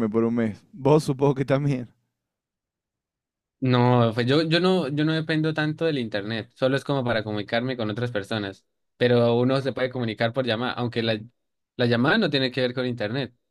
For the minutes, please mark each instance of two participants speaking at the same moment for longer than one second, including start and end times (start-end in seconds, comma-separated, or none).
none